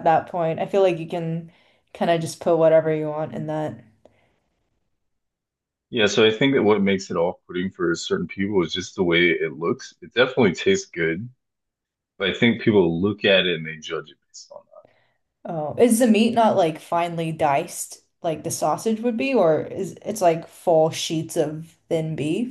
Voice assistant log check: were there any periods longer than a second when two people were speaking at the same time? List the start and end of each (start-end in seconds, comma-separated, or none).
none